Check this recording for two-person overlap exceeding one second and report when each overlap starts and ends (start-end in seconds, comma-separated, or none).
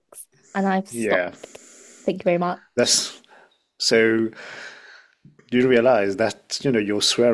none